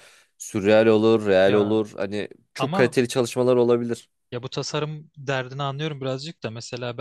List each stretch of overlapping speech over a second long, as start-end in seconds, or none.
none